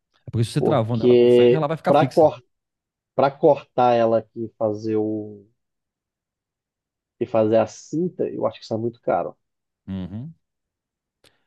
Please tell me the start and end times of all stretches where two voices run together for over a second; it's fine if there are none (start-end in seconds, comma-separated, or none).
0.6-2.2